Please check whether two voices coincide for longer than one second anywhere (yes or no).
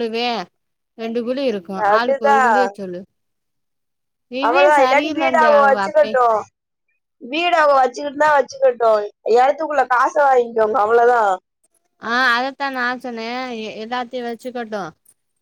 yes